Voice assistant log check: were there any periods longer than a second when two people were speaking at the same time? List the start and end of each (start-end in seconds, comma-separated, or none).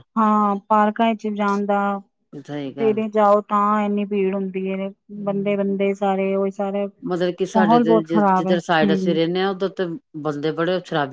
7.1-9.2